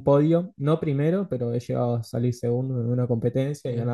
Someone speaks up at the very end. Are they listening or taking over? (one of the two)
listening